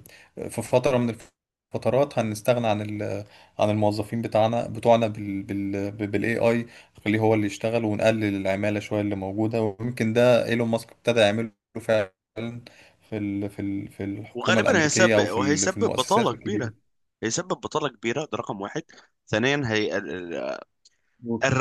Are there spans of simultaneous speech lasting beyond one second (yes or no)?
yes